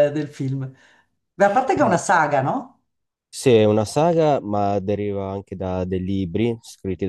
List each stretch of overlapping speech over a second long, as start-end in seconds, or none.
none